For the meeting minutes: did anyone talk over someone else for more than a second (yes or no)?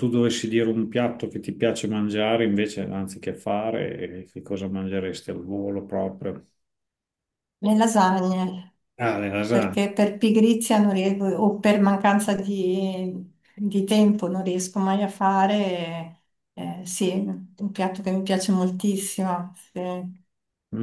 no